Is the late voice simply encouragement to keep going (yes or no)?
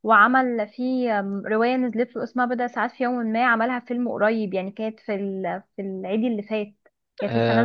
no